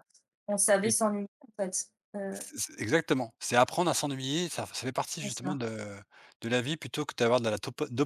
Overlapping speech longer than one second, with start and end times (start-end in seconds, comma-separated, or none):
none